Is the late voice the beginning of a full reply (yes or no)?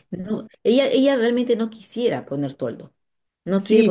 yes